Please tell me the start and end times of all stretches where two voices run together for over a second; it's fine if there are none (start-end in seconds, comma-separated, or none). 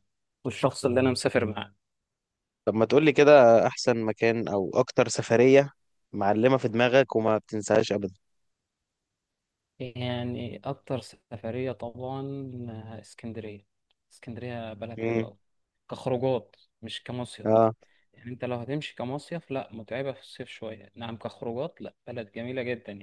none